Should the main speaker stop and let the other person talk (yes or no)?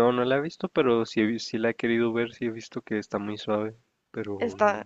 yes